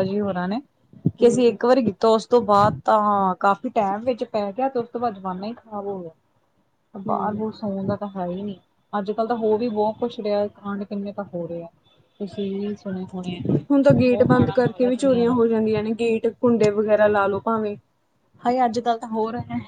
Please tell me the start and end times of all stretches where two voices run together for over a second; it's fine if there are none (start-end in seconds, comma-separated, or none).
13.7-15.4